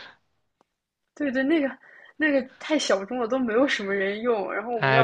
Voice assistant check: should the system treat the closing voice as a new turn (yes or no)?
yes